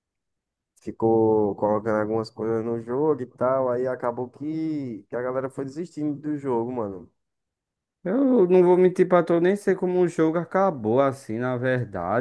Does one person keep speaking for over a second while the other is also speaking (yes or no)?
no